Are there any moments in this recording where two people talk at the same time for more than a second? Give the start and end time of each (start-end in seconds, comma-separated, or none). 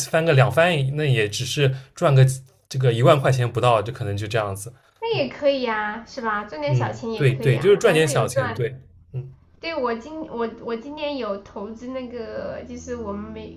6.6-8.7